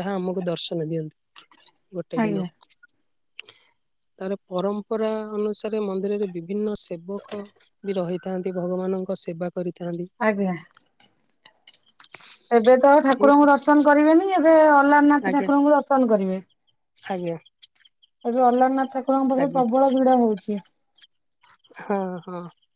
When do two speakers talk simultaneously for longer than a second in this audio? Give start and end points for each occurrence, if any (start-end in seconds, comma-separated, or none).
none